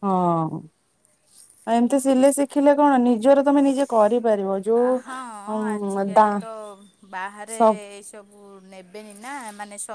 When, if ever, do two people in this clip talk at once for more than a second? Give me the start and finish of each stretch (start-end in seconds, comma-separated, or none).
none